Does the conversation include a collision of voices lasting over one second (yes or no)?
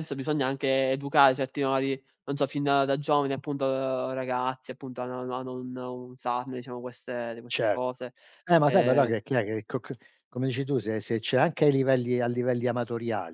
no